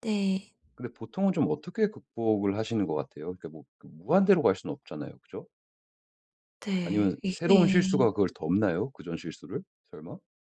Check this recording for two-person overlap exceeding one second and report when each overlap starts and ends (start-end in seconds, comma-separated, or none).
6.8-8.1